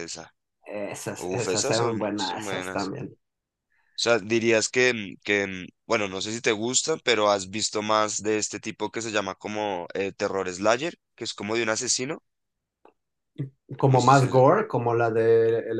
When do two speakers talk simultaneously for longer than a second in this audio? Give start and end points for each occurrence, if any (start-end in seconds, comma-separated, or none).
1.1-2.9